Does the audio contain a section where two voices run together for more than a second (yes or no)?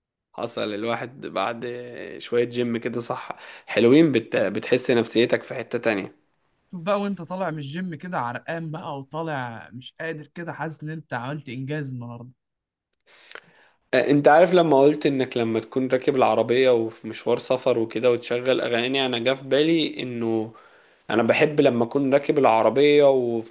no